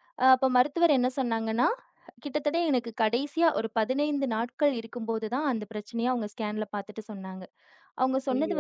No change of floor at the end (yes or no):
yes